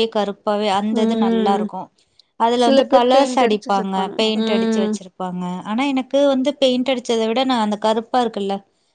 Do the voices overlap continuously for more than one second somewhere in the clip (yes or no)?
yes